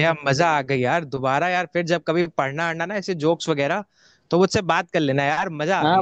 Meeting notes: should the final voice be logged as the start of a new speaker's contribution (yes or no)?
yes